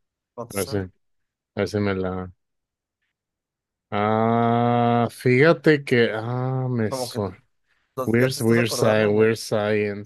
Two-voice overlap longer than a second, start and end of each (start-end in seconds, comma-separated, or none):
8.0-9.3